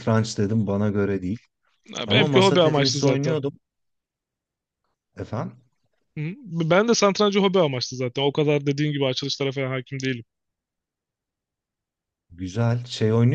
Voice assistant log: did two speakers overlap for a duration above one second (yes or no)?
yes